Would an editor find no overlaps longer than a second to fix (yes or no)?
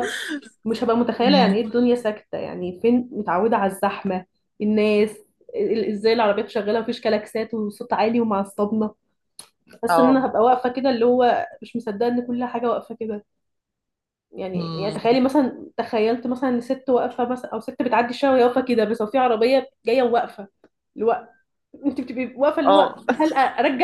yes